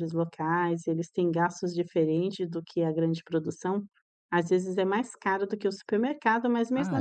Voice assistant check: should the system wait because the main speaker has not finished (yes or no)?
yes